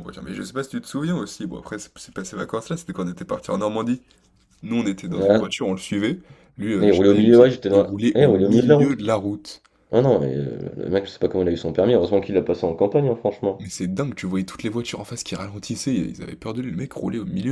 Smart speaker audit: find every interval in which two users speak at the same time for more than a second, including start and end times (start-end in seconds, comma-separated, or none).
6.8-9.0